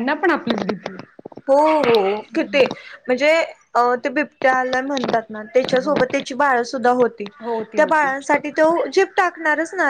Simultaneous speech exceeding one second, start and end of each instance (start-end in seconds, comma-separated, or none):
none